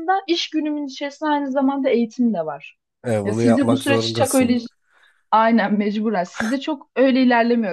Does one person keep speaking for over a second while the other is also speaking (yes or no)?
yes